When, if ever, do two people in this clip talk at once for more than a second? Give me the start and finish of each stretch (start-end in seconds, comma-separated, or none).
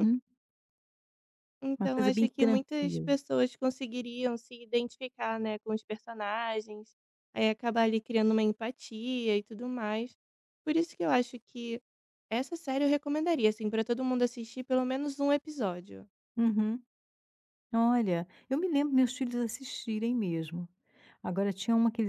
1.8-3.1